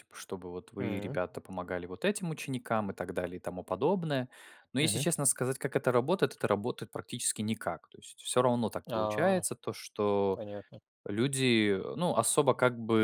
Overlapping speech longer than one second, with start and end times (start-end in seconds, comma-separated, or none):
none